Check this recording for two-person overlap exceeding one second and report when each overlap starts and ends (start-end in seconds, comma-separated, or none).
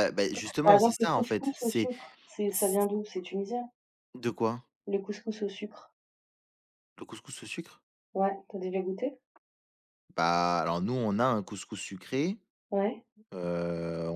0.6-1.9